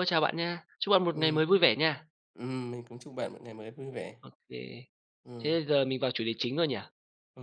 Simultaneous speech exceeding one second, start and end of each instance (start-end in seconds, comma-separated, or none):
none